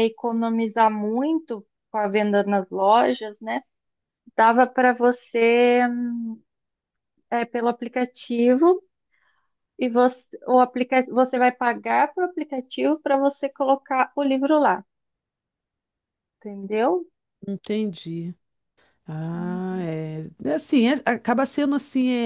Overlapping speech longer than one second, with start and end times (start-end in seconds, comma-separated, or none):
none